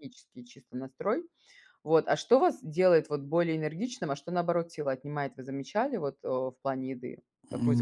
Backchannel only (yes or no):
no